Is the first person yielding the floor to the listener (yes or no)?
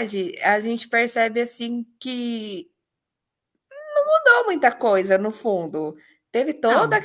no